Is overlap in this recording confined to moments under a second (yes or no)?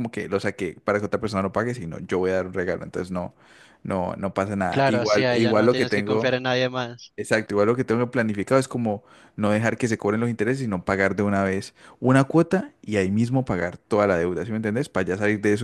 no